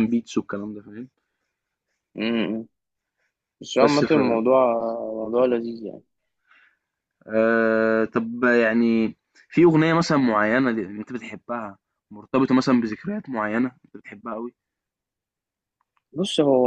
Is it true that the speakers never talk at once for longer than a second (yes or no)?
yes